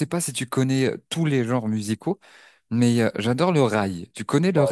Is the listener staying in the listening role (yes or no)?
no